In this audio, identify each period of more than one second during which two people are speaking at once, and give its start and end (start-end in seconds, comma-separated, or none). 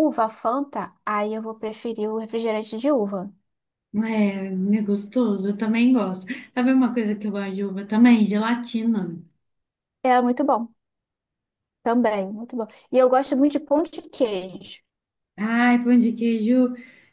none